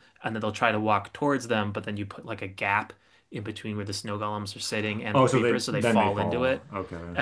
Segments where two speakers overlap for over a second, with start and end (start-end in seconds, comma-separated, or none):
5.1-6.6